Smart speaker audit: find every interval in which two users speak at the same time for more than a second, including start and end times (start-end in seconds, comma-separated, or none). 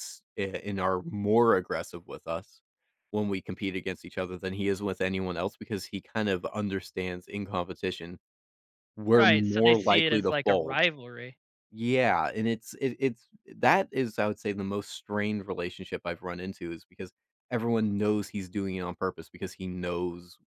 9.2-10.8